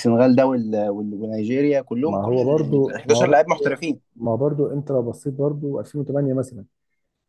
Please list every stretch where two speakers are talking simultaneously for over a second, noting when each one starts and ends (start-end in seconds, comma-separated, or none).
2.0-3.5